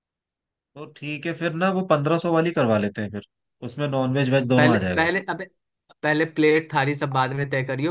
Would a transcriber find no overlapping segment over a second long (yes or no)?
yes